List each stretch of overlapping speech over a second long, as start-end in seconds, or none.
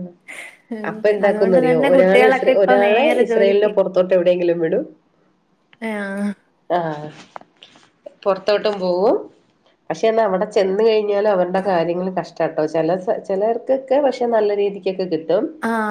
1.3-3.7